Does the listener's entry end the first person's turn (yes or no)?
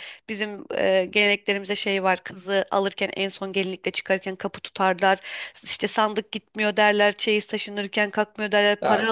yes